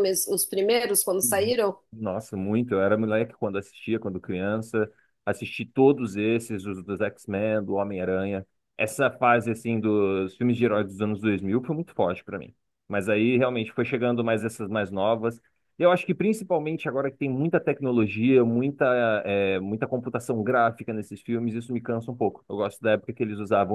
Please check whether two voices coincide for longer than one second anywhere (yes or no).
no